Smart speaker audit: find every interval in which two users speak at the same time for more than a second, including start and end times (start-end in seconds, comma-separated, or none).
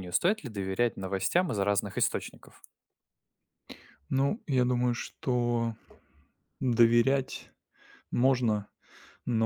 none